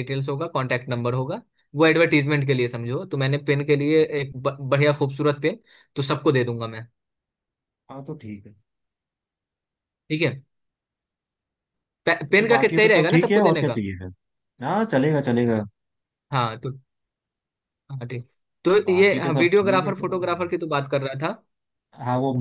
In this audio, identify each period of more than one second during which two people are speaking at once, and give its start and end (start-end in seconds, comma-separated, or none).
12.3-13.8, 18.9-20.2